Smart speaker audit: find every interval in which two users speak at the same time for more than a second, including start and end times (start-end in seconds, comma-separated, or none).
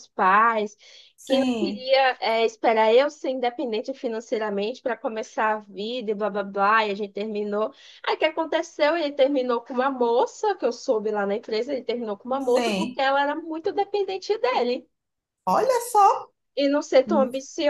none